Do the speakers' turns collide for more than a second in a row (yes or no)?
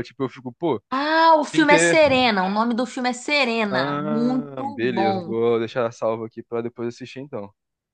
yes